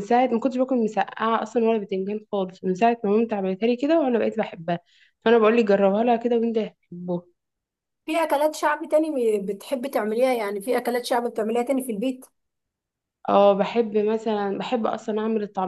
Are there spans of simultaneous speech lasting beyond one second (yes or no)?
no